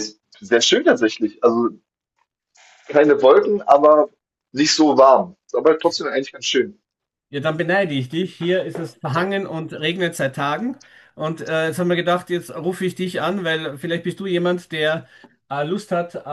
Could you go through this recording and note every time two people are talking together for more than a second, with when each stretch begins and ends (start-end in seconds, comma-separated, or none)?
none